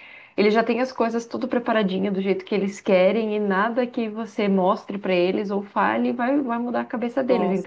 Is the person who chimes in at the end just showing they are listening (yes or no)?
yes